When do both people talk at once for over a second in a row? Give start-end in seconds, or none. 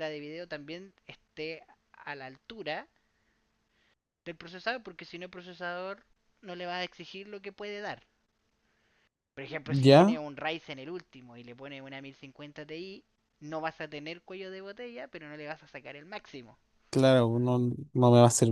none